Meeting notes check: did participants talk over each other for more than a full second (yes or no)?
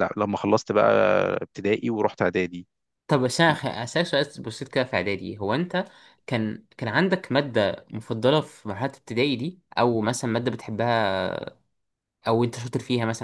no